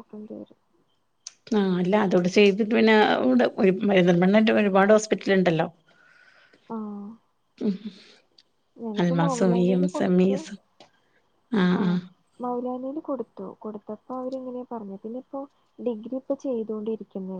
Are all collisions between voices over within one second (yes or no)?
no